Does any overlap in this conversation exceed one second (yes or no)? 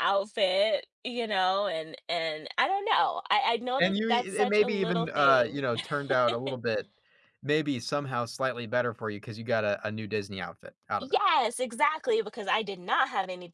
yes